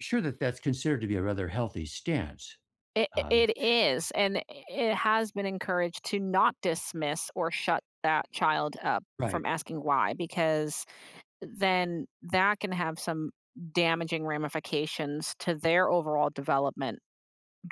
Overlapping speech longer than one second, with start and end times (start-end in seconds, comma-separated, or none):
none